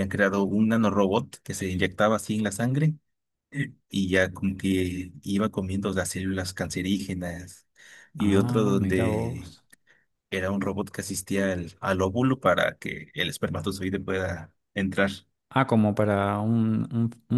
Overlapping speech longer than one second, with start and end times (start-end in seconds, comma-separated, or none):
8.2-9.6